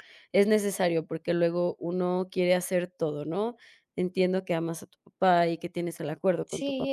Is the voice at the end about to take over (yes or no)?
yes